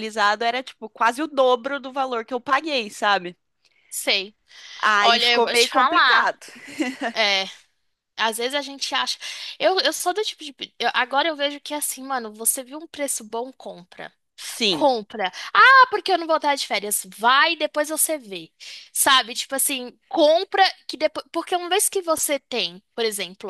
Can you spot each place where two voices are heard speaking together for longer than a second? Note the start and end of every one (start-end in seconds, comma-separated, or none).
5.0-6.3